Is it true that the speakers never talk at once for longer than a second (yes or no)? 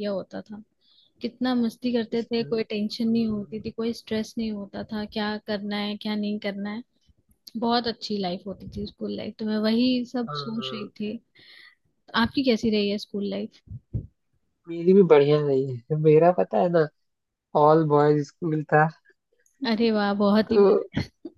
no